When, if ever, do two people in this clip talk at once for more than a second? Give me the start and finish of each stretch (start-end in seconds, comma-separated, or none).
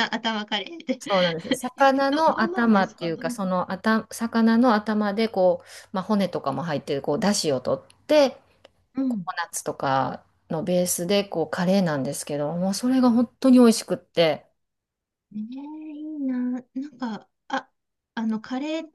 2.1-3.4